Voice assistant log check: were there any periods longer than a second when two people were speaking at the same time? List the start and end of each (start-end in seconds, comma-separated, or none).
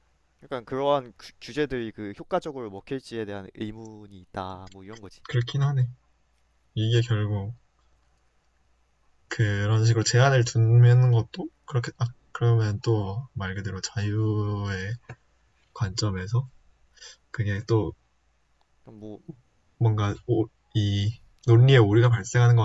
none